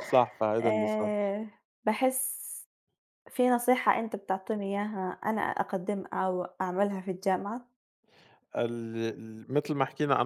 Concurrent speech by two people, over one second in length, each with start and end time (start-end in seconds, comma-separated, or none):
none